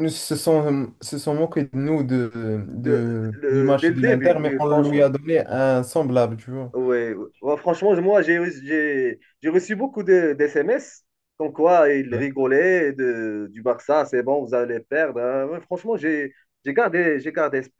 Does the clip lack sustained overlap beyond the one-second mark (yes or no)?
no